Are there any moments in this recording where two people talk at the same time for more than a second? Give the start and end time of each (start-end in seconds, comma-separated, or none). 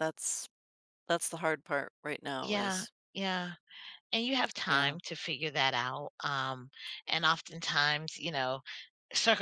none